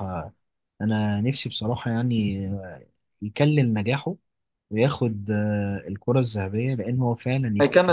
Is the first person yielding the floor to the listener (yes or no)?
yes